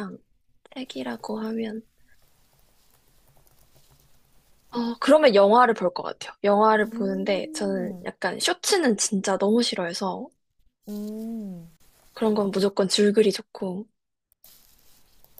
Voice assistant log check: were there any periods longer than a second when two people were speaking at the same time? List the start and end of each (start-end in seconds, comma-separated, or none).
6.9-8.1